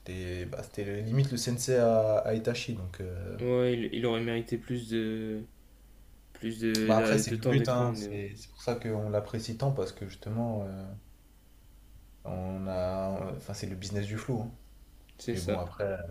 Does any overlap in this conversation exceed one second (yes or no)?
yes